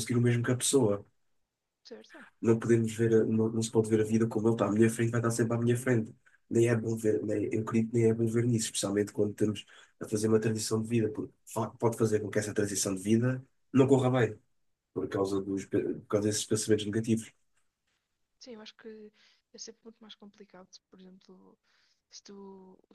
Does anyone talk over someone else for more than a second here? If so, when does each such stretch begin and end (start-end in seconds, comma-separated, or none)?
none